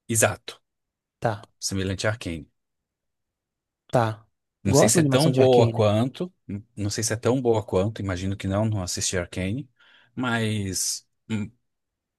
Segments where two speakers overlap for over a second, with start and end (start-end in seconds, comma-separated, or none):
4.7-5.9